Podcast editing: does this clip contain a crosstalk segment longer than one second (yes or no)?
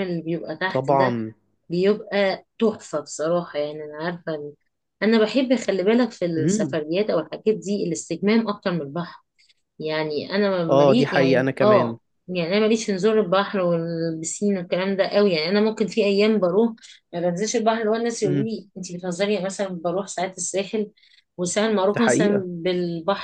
yes